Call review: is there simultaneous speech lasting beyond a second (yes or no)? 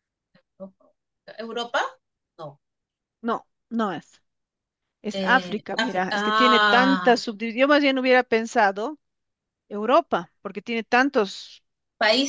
yes